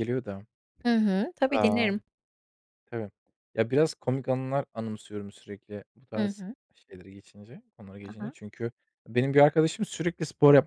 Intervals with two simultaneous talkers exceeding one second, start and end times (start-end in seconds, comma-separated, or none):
none